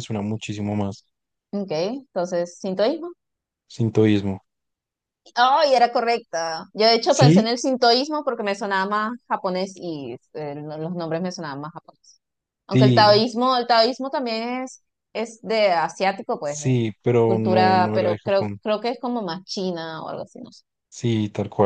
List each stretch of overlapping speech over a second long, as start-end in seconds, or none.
17.2-18.6